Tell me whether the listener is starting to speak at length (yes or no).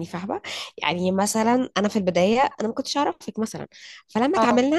no